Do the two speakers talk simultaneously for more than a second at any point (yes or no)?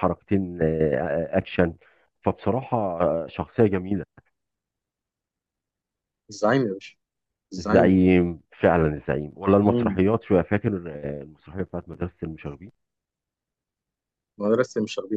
no